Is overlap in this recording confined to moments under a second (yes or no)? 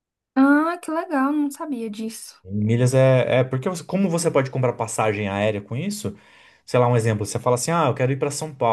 yes